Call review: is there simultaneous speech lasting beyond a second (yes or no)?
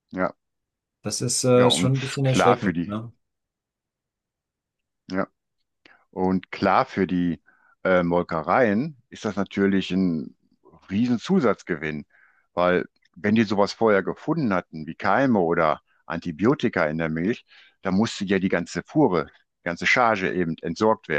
yes